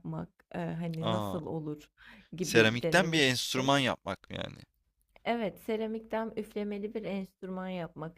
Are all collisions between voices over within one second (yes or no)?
no